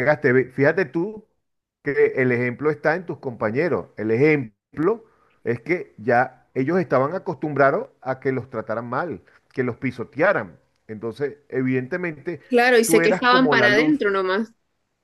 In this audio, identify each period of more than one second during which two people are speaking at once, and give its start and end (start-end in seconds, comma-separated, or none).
12.8-14.1